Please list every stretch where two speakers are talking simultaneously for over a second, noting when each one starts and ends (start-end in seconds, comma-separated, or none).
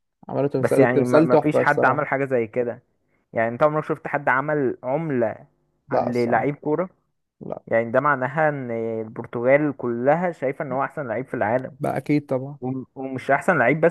0.6-2.0